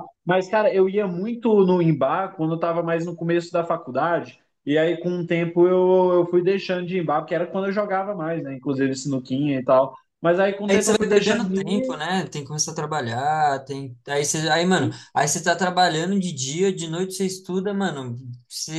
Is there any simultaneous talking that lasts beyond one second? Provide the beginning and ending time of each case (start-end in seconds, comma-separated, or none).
10.7-11.9